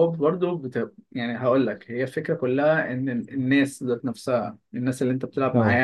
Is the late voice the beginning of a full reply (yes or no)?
no